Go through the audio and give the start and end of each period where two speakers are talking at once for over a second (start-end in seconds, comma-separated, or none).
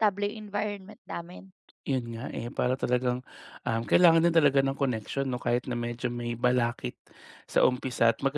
none